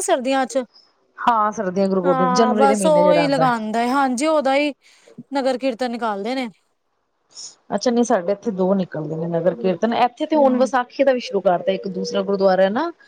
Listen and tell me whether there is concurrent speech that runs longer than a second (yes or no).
yes